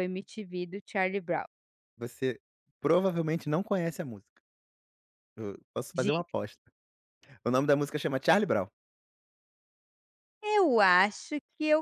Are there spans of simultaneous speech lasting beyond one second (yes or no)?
no